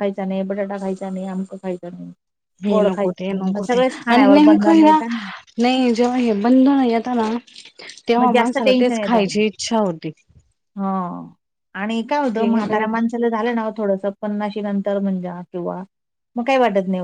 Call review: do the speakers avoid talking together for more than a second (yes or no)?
no